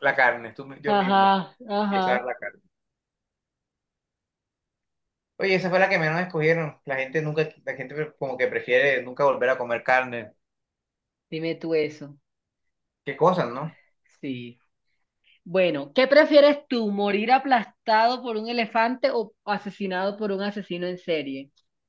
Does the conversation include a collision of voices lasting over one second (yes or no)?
yes